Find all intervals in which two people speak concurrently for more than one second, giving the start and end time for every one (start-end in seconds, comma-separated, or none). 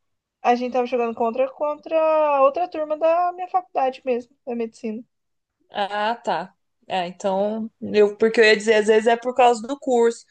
none